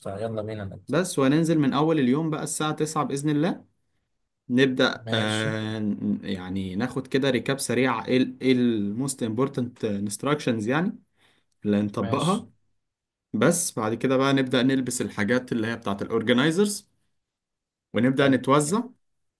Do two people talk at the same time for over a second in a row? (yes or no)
no